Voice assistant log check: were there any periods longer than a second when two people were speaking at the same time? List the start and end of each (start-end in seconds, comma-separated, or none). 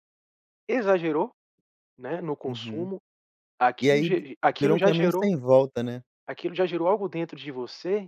3.8-5.3